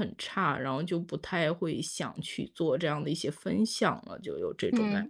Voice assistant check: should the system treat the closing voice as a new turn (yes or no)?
yes